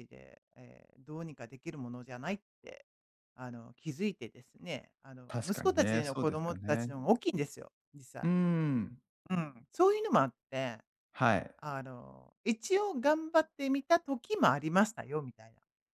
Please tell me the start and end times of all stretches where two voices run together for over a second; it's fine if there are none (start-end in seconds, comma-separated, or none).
5.3-7.0